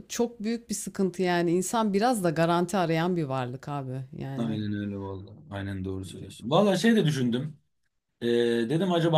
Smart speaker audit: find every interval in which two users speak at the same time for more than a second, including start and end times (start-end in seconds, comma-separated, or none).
none